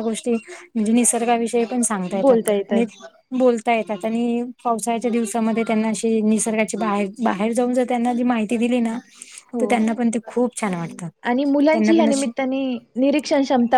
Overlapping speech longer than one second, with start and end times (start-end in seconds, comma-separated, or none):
none